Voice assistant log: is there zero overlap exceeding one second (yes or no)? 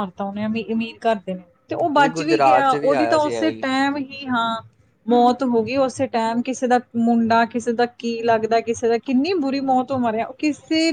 no